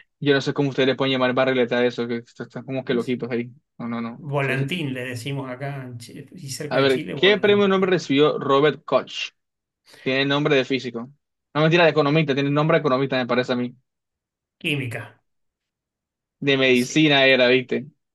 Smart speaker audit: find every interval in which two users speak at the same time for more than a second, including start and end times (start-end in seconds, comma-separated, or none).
6.7-8.0